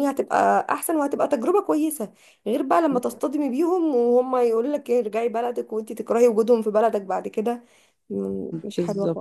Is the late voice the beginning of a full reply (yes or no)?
yes